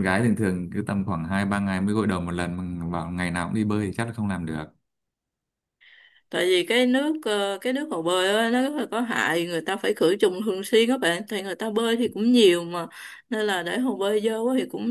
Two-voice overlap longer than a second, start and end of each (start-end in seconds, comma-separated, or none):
none